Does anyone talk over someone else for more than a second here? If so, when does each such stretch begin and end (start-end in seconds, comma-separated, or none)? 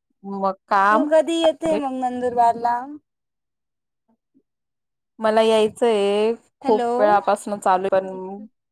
none